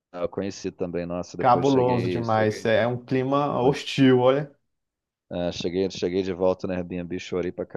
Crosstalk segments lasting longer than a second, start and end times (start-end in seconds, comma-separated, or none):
1.4-2.7